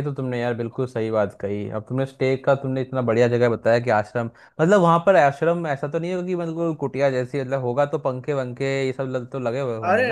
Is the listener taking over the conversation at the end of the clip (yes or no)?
yes